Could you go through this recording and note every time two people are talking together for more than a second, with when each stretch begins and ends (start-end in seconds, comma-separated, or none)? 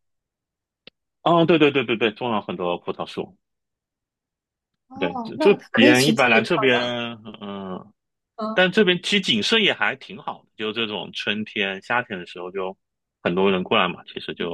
5.0-6.6